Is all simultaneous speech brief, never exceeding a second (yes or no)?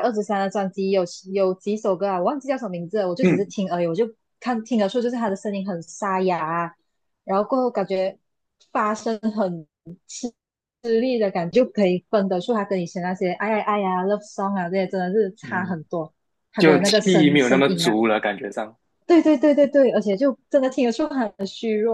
no